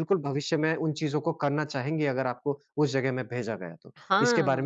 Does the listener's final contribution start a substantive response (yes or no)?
yes